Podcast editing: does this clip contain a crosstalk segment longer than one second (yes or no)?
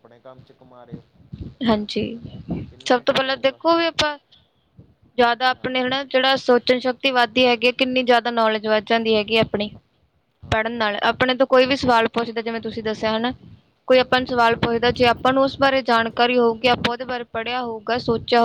no